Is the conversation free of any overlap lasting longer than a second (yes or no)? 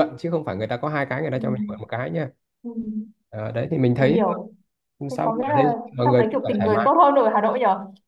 no